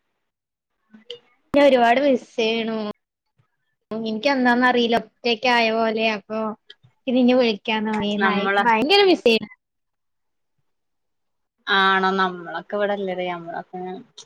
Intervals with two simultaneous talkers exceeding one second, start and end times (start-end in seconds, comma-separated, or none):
none